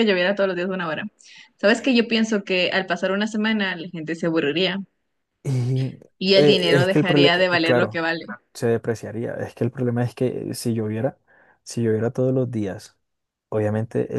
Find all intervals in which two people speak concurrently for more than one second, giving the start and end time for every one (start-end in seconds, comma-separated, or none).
6.3-8.1